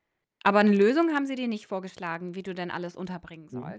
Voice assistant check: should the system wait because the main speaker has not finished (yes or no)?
no